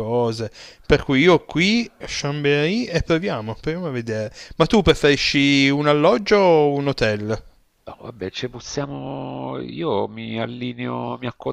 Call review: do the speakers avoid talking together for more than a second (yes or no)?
yes